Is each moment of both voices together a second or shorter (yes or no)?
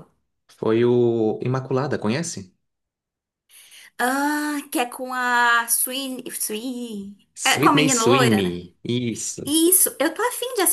no